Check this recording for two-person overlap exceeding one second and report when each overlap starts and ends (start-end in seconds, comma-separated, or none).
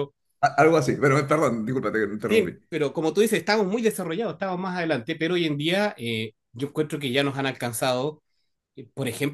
none